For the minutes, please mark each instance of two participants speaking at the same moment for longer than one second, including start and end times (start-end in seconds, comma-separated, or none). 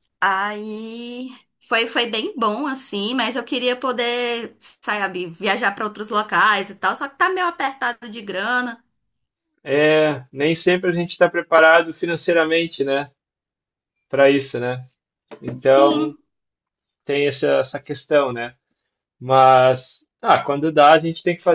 none